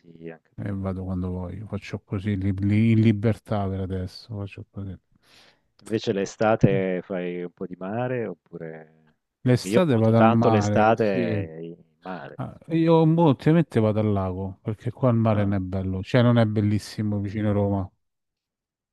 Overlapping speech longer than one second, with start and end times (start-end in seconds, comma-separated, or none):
9.5-11.5